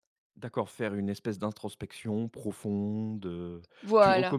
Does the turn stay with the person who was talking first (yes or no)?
yes